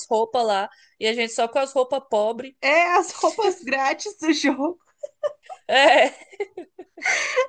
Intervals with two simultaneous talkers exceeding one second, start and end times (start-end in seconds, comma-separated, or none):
none